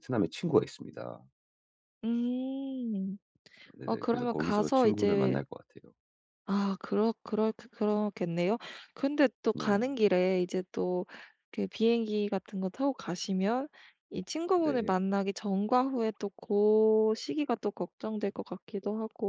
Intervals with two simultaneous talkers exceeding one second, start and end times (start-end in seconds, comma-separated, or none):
3.9-5.4